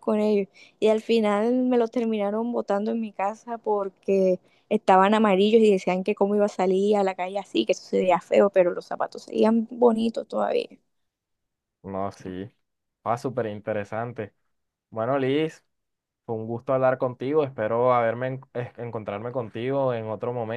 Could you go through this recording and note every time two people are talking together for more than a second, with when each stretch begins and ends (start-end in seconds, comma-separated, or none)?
none